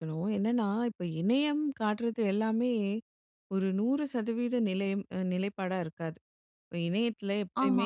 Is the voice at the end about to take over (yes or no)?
no